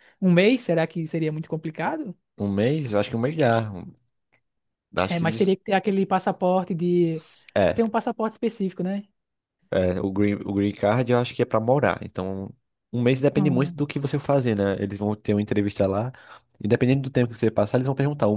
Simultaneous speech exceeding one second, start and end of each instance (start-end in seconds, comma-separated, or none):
none